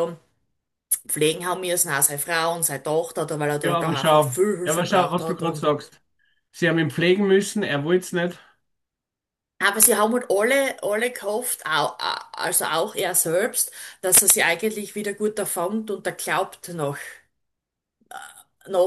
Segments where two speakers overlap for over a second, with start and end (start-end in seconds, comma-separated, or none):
3.6-5.7